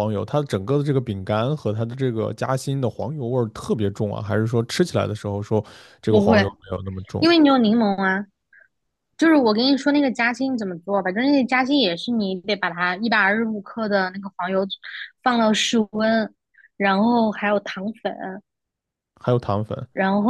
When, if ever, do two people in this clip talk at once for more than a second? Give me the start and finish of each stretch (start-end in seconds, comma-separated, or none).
none